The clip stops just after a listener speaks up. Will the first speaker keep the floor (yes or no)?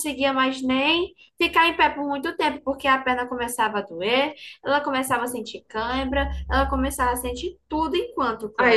no